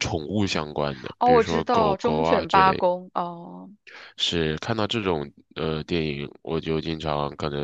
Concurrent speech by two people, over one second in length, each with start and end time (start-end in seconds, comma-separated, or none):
1.2-2.8